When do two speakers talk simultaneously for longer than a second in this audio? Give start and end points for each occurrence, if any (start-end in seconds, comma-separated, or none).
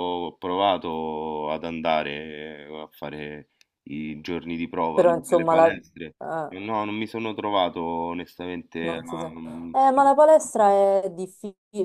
4.9-6.5